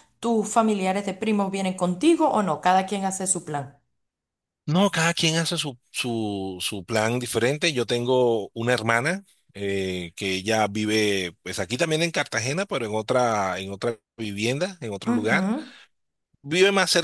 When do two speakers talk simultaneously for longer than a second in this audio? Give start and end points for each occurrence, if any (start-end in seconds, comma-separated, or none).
none